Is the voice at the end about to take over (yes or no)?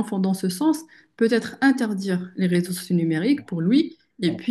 no